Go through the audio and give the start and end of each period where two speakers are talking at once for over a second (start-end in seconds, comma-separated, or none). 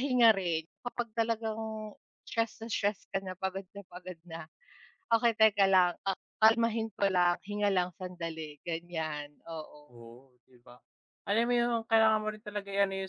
none